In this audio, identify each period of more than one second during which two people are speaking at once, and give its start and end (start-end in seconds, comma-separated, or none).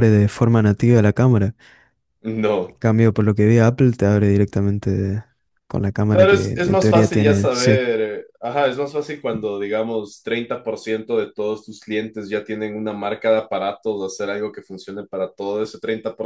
6.1-7.8